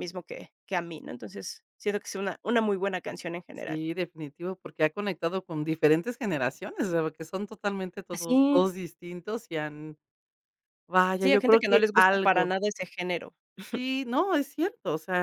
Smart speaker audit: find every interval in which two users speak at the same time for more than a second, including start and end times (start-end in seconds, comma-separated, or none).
11.2-12.5